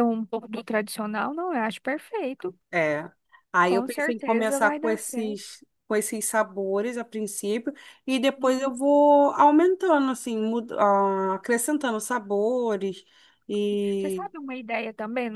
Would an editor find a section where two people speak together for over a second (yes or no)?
yes